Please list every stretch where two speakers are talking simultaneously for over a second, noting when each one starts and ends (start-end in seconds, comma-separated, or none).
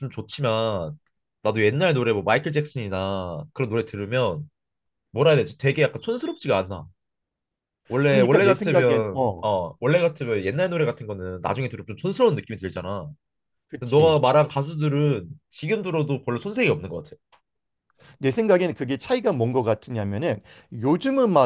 8.1-9.4